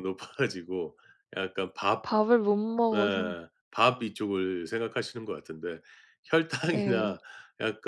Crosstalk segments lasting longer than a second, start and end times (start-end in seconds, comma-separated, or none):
none